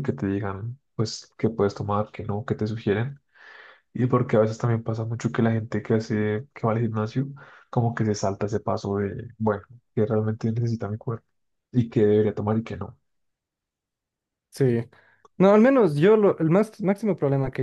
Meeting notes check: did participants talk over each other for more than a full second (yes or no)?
no